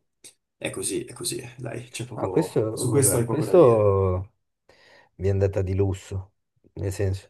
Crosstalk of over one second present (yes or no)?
yes